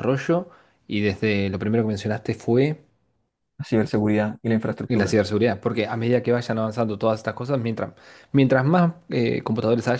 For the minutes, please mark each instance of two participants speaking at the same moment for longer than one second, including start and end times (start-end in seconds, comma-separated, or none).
none